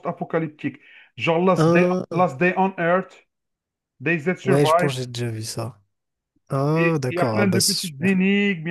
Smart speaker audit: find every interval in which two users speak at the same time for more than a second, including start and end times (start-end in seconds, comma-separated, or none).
6.7-8.2